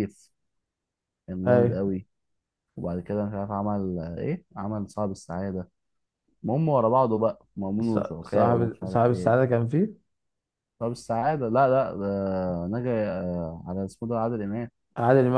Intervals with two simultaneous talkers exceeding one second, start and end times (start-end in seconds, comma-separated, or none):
7.8-9.3